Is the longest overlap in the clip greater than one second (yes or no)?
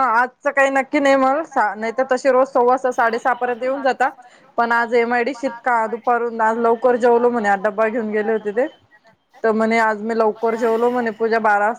yes